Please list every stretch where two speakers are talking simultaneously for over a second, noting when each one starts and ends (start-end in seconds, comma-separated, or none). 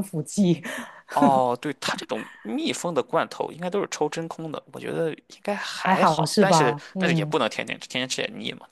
5.8-7.3